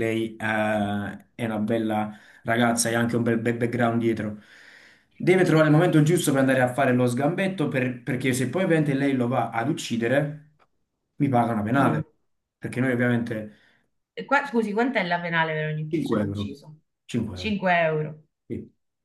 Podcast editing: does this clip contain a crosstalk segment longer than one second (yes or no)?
no